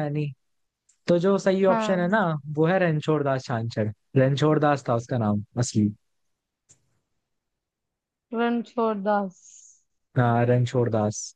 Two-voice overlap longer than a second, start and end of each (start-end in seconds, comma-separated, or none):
none